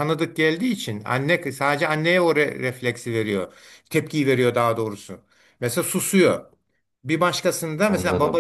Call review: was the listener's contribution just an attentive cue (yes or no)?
yes